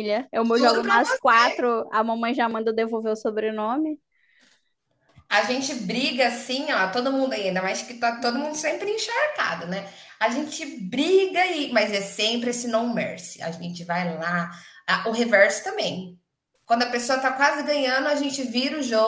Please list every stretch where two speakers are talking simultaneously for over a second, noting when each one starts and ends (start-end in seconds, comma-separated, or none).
none